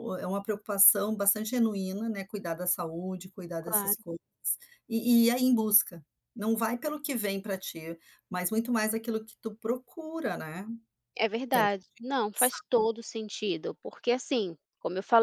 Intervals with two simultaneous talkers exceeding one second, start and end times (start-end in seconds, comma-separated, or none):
none